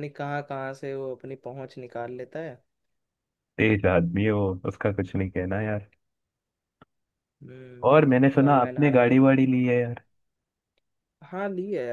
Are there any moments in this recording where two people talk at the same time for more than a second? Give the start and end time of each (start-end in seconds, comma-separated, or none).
7.9-9.2